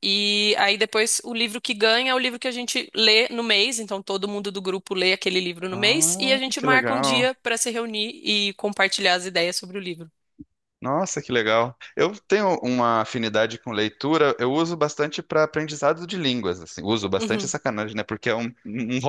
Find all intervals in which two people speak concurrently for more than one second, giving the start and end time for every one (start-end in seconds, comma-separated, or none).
5.7-7.3